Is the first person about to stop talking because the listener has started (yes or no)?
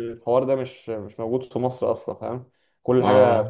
no